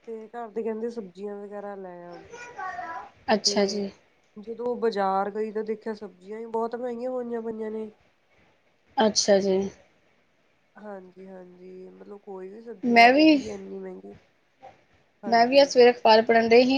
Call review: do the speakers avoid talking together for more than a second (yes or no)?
yes